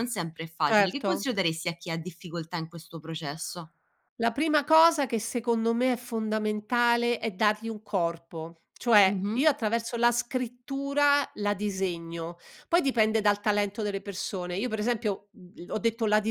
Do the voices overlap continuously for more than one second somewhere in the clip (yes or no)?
no